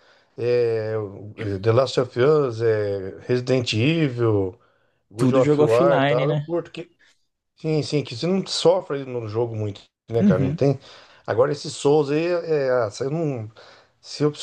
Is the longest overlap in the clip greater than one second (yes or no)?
yes